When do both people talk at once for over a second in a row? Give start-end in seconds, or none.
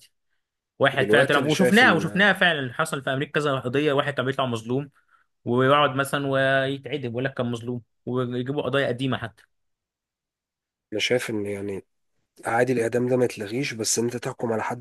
0.9-2.2